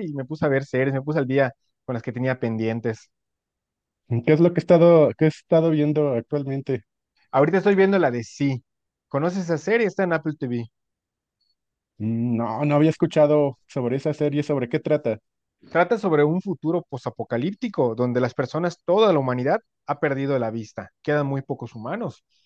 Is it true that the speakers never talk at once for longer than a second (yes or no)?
yes